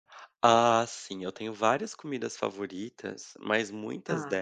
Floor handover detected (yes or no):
no